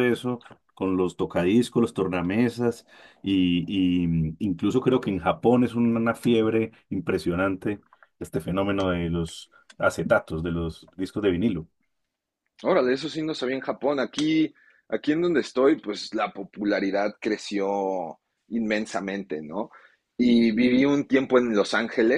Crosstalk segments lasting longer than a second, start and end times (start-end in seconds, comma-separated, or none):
none